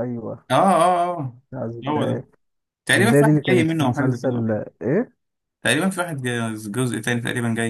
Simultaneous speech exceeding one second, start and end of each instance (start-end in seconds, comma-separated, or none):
3.0-4.6